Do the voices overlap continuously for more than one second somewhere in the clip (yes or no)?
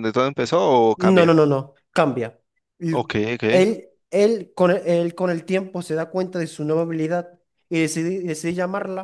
no